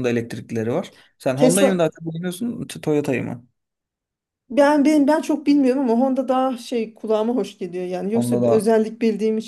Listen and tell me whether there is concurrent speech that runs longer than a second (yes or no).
no